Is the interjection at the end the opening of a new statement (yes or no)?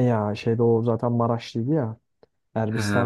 no